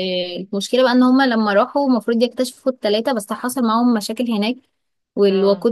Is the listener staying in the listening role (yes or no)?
yes